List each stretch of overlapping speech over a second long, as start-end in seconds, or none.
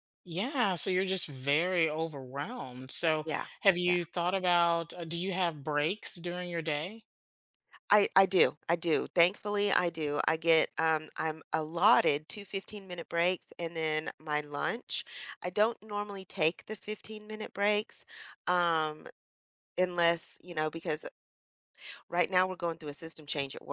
none